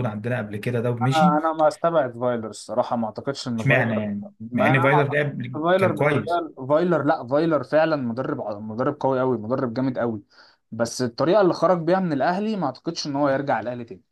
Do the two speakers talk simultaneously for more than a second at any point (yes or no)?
yes